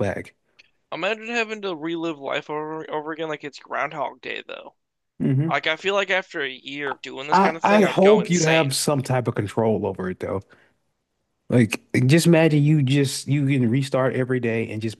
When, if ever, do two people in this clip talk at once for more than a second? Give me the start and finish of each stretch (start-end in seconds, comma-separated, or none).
7.3-8.8